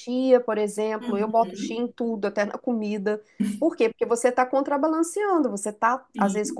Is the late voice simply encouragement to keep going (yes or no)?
yes